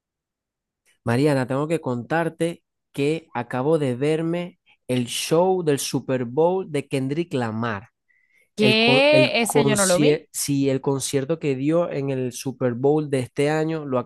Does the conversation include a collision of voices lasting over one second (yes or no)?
yes